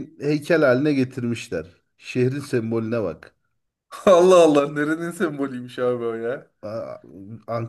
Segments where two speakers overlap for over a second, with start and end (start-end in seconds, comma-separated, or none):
none